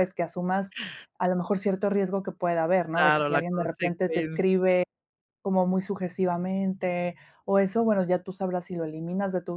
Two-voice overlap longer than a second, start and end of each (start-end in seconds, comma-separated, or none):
2.9-4.5